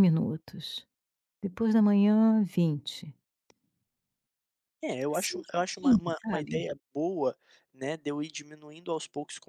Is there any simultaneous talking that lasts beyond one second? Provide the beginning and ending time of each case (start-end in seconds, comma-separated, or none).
5.1-6.7